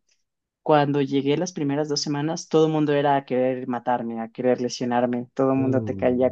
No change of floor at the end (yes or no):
yes